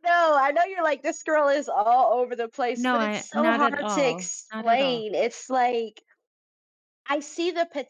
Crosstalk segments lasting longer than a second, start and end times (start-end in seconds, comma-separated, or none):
2.8-5.0